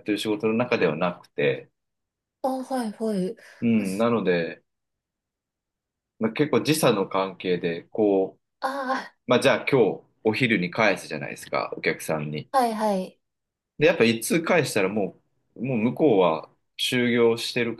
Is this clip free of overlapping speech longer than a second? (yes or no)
yes